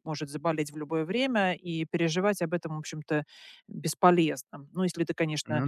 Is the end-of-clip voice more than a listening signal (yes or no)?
no